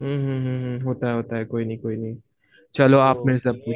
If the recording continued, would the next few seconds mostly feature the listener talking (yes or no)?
yes